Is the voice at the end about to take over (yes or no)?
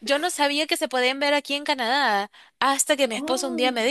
no